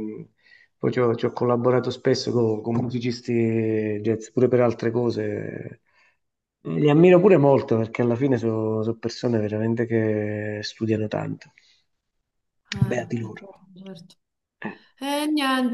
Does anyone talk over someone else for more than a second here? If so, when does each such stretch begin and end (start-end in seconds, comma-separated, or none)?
none